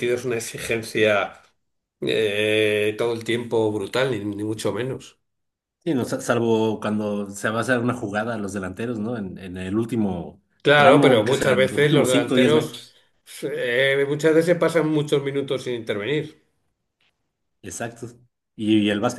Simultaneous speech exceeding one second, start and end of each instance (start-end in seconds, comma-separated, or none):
10.6-12.8